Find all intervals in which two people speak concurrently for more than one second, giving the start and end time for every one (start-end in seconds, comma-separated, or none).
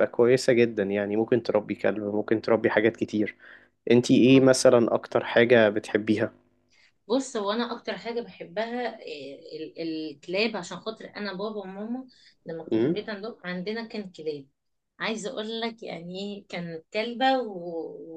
none